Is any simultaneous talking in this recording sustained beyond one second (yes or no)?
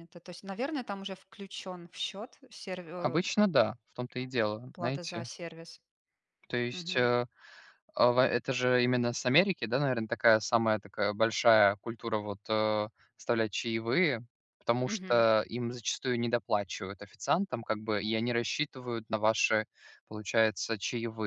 no